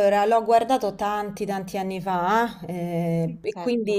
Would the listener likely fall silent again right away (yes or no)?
yes